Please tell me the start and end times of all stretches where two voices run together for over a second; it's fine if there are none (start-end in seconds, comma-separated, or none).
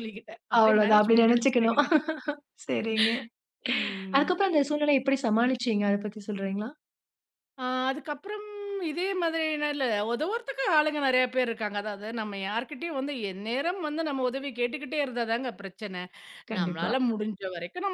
0.6-1.8